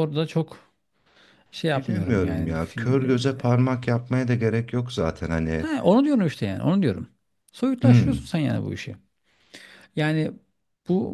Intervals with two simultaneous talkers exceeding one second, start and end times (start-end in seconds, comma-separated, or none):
1.8-3.3